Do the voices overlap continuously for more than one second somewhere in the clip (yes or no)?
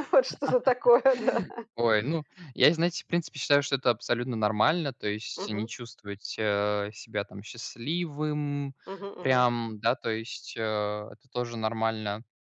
no